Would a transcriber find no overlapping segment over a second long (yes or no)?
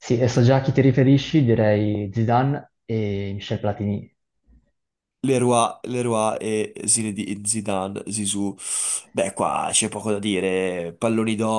yes